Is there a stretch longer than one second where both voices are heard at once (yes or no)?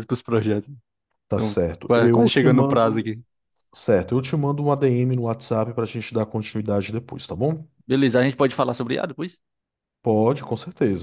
yes